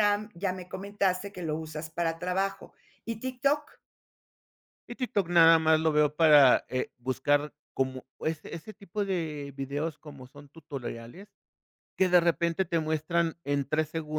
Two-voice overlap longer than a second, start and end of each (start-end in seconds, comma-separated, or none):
none